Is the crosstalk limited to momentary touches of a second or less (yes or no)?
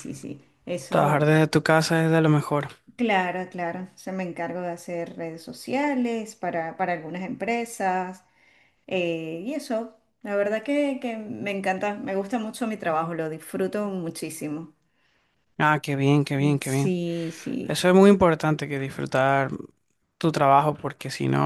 yes